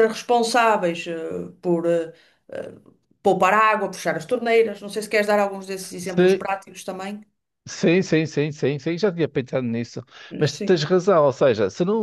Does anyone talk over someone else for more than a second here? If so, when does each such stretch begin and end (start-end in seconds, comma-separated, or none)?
none